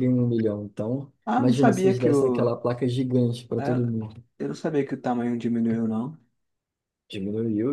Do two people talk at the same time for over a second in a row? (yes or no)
yes